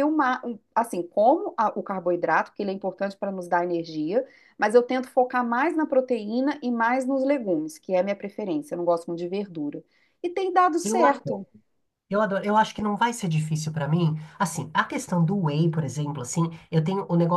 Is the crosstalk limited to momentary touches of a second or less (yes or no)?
yes